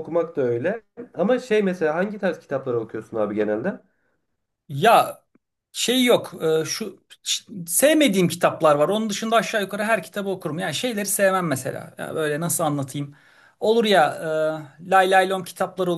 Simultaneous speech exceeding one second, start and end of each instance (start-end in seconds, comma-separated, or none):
none